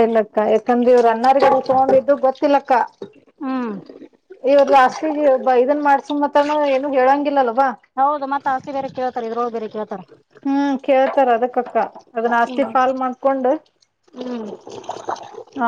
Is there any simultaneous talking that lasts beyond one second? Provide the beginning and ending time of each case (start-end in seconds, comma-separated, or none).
none